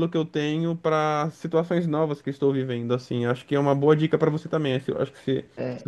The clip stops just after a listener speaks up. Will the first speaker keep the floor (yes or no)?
no